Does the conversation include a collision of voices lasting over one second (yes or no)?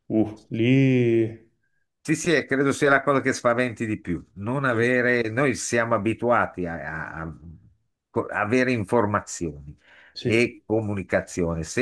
no